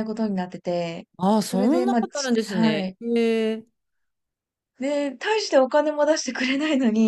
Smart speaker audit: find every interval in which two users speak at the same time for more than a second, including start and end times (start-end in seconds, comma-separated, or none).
1.4-3.0